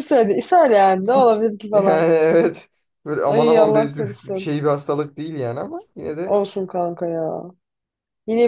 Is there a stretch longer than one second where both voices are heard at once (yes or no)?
yes